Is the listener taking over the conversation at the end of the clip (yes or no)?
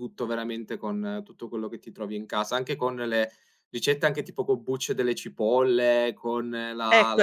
yes